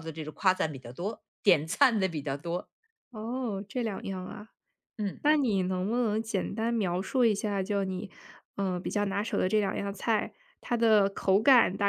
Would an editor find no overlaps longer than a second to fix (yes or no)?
yes